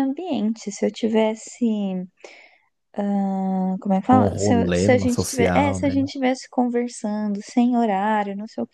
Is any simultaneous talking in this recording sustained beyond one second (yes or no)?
yes